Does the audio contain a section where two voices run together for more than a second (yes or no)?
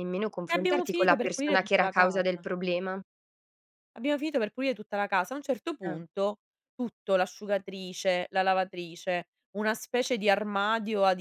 yes